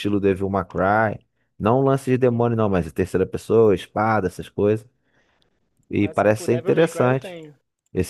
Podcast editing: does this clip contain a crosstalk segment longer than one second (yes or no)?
yes